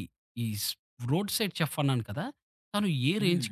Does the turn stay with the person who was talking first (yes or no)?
yes